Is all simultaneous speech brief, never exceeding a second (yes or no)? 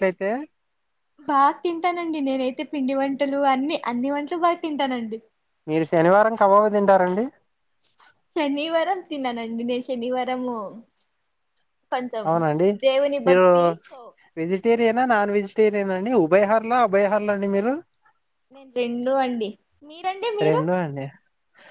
yes